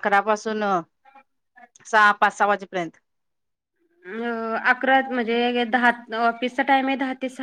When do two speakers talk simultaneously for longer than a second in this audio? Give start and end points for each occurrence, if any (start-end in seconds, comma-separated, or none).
none